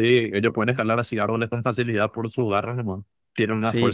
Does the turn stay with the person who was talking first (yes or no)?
yes